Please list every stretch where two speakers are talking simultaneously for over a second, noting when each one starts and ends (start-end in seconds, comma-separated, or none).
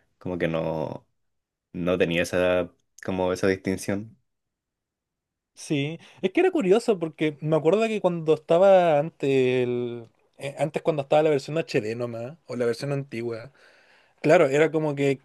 none